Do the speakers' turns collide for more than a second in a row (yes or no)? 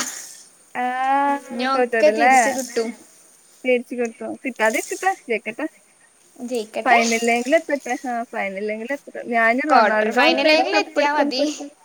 yes